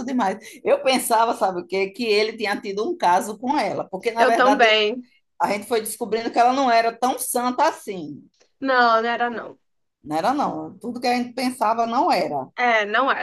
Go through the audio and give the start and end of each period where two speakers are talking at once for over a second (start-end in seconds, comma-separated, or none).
none